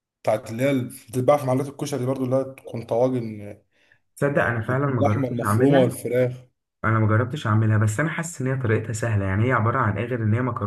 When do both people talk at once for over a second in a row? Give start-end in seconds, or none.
4.4-5.9